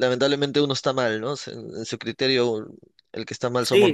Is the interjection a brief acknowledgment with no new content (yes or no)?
no